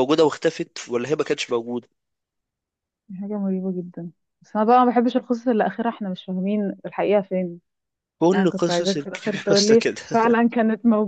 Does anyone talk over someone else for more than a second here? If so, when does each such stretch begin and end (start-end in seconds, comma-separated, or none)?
8.3-10.0